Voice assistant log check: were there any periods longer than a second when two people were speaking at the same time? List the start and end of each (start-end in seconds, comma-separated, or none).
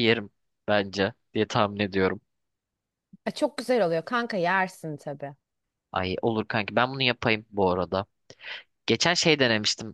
none